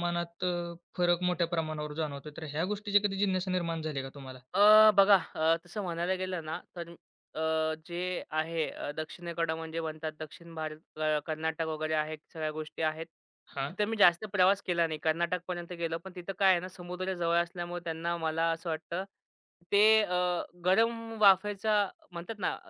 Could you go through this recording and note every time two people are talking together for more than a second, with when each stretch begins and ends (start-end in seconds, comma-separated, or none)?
none